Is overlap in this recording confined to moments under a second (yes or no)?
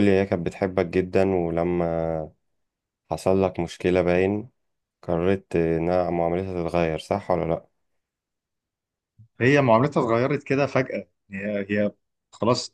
yes